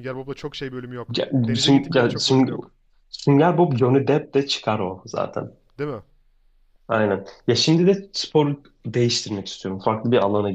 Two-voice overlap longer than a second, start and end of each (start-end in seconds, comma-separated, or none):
1.1-2.7